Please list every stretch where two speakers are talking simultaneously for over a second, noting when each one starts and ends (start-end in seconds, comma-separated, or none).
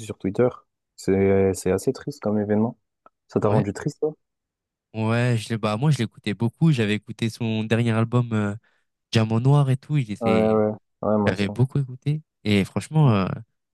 none